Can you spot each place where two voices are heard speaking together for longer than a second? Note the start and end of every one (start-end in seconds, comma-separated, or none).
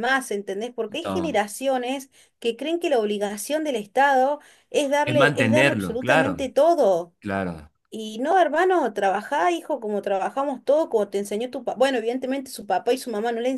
5.0-6.5